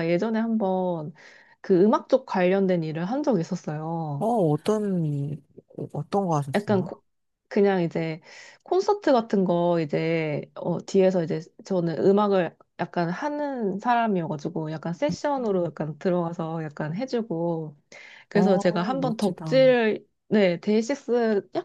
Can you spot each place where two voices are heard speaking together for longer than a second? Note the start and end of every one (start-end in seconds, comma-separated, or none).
18.3-19.6